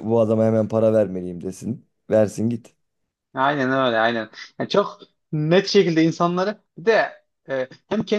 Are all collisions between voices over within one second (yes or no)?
yes